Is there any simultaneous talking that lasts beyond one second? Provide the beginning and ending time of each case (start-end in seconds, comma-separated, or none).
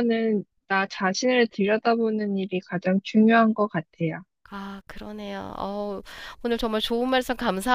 none